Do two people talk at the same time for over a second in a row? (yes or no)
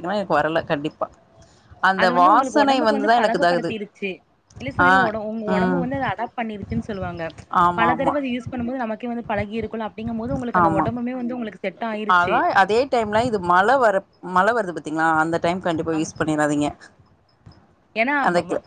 yes